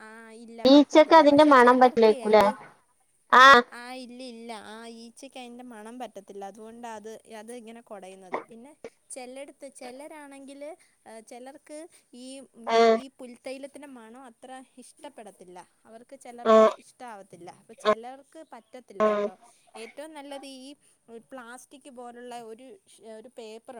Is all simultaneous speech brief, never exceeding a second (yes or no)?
no